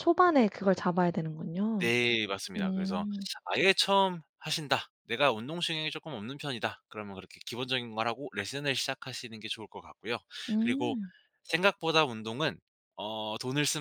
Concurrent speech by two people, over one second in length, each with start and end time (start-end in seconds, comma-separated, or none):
none